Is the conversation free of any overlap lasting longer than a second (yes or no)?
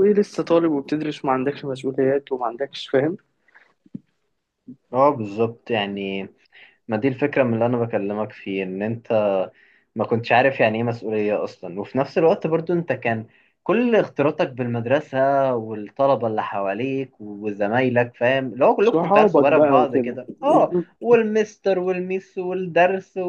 no